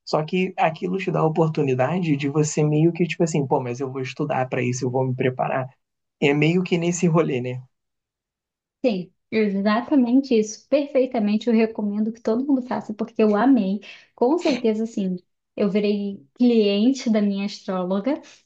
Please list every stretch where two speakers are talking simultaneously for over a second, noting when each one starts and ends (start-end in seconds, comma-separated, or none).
none